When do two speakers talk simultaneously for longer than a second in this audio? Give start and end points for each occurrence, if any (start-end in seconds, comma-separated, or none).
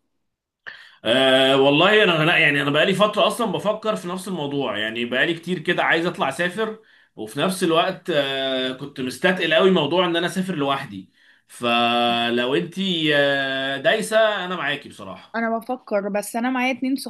none